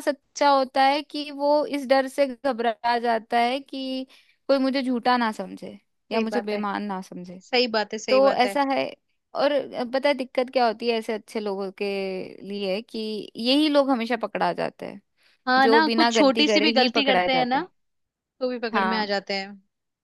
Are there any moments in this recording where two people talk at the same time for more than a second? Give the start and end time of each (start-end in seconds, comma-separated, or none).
15.6-17.6